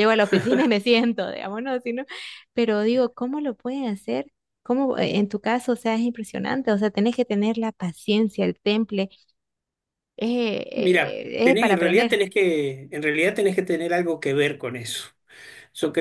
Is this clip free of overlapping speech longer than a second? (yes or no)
no